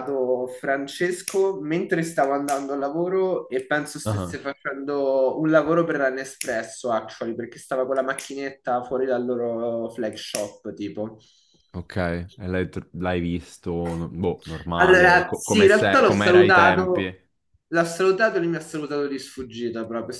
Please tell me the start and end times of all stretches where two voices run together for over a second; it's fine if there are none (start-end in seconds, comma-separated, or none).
14.8-17.1